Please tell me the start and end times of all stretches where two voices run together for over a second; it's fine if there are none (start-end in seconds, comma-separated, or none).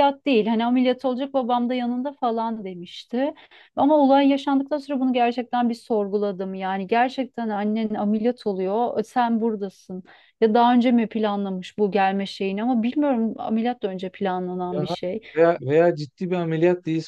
none